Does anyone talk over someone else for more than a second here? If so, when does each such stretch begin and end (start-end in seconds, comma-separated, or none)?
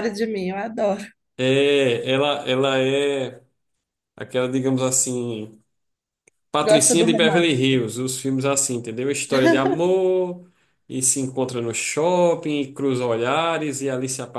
6.6-7.8